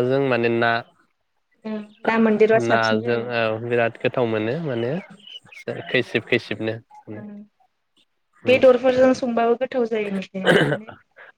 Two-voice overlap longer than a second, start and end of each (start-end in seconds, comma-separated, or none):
none